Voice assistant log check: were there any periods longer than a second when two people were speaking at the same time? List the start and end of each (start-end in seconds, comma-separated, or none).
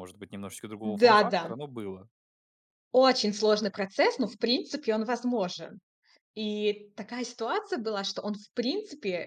none